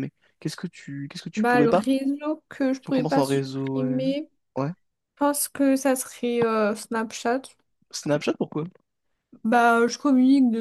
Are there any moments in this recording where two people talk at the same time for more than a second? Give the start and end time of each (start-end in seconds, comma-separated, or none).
2.8-4.0